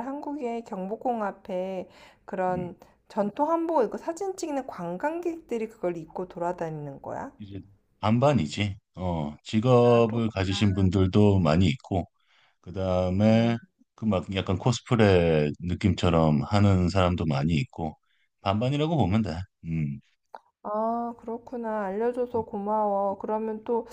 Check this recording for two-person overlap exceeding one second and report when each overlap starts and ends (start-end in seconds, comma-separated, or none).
none